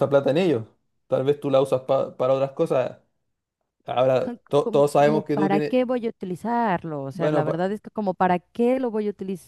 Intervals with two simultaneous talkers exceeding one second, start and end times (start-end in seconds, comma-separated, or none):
4.2-5.8